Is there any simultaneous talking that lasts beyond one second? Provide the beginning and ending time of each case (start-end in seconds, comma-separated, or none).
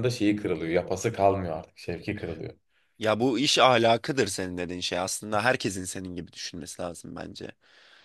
none